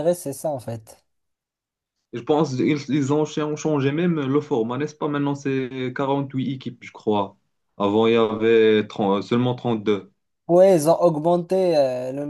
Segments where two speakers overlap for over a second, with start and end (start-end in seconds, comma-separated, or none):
none